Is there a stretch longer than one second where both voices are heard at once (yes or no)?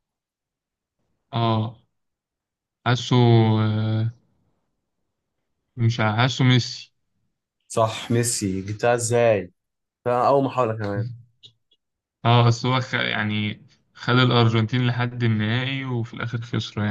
no